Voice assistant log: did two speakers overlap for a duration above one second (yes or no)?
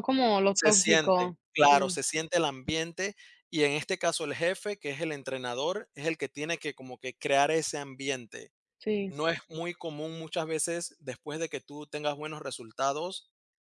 yes